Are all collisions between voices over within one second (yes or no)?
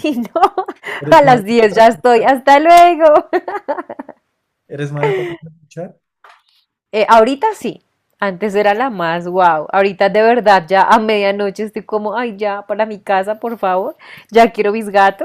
no